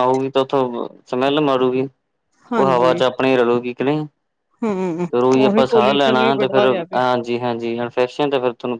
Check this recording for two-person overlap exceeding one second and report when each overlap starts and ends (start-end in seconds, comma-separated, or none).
5.5-7.0